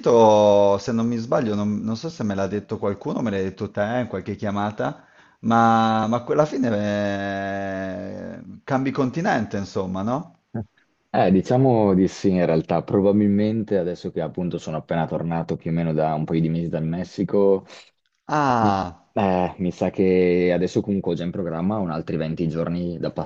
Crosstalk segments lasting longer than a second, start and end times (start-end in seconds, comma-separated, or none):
none